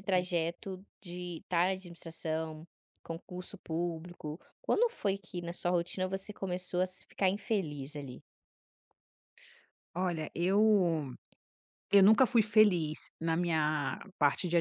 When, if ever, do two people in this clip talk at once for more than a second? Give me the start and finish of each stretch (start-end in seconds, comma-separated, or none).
none